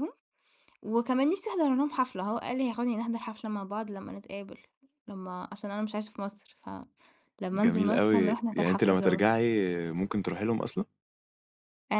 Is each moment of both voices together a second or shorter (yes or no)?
no